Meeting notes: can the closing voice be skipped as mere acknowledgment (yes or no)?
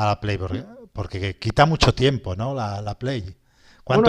no